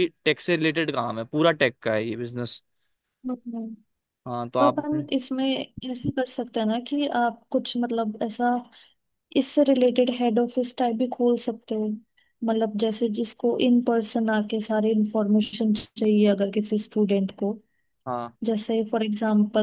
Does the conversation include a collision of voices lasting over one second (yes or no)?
no